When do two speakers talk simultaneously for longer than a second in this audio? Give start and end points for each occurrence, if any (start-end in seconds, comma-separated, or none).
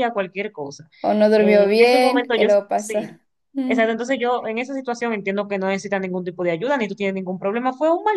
1.4-3.2